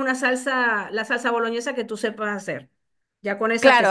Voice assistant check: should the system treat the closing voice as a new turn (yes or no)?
yes